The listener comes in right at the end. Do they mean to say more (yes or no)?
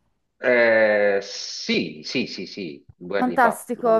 yes